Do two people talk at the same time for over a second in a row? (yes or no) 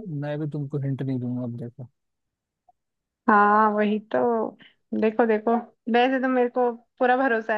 no